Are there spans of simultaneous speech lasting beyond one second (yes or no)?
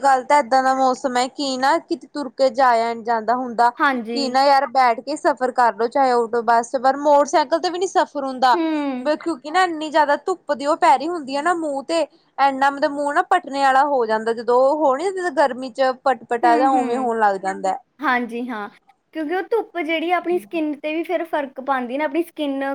no